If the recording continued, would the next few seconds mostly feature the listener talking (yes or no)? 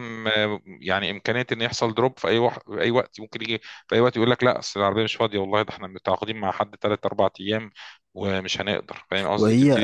yes